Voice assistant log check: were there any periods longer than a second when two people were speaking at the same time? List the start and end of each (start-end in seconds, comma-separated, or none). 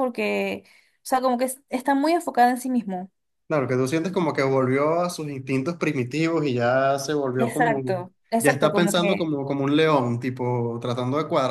7.4-9.3